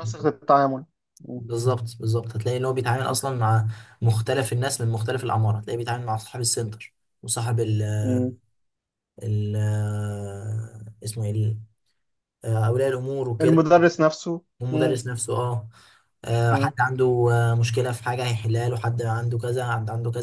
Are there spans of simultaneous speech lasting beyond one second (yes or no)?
no